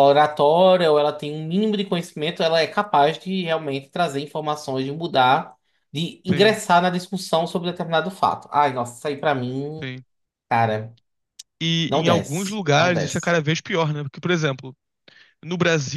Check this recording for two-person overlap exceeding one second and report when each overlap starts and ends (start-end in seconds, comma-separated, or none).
11.9-13.3